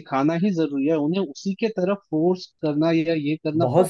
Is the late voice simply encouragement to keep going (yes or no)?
no